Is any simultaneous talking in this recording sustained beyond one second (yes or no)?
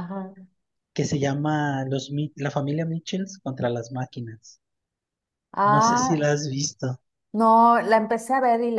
no